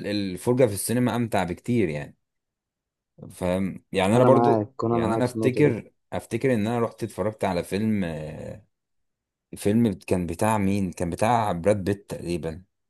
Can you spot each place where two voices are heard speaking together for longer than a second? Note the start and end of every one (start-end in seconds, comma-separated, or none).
4.2-5.8